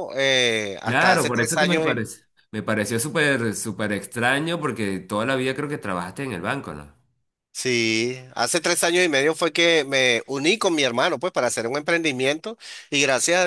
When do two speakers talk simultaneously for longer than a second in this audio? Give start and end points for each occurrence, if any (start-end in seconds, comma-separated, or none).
0.8-2.1